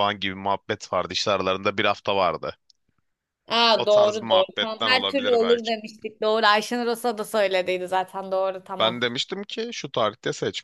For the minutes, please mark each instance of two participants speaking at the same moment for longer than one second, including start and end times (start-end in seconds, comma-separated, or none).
3.7-5.7